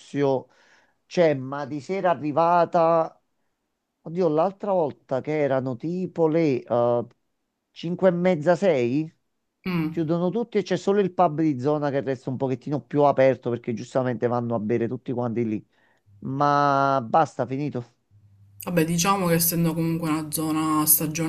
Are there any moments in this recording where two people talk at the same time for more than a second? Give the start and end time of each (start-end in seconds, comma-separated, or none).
none